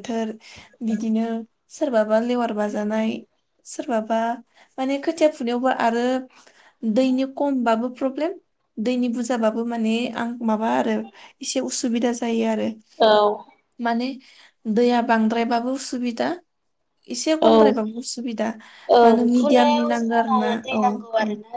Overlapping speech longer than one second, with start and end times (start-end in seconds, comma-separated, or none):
19.0-20.8